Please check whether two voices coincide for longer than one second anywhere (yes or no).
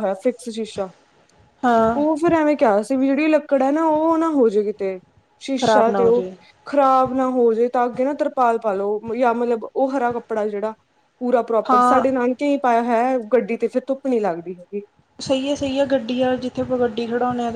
no